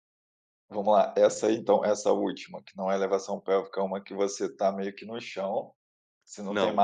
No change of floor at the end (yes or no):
no